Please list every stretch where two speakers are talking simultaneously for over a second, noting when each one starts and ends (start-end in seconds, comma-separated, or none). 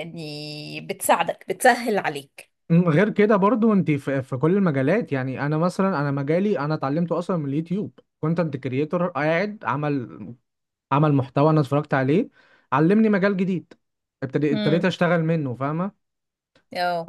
none